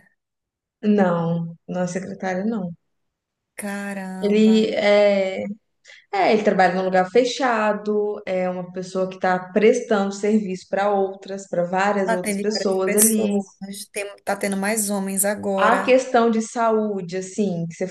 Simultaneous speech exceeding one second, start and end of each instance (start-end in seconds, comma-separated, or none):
12.1-13.4